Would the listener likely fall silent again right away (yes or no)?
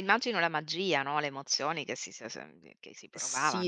no